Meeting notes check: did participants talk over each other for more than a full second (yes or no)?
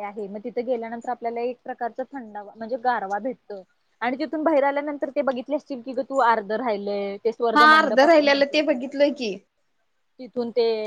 yes